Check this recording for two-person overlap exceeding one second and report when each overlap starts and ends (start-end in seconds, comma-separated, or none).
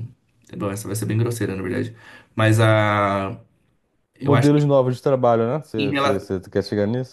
none